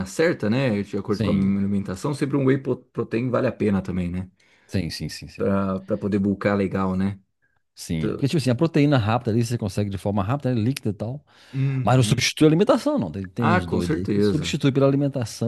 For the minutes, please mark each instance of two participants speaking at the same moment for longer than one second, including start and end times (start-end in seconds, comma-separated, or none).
13.4-14.6